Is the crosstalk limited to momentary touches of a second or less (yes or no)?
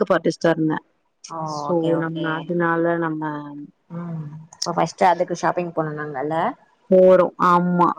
yes